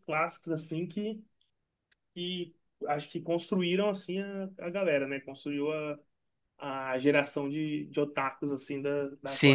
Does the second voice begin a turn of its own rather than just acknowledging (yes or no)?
yes